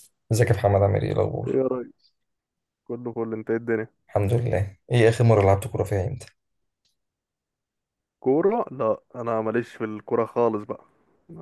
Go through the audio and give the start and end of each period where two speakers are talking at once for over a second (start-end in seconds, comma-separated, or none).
none